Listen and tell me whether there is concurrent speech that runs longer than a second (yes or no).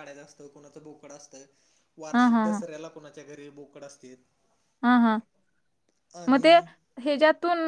no